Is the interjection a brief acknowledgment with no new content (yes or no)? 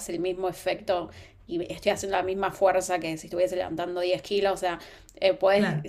yes